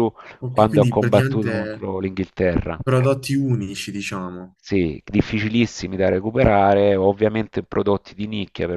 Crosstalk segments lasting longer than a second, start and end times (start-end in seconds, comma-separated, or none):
0.5-1.9